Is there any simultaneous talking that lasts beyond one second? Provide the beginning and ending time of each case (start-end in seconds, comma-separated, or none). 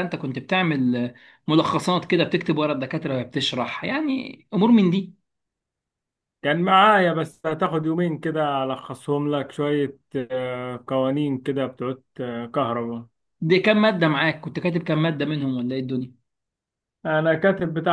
none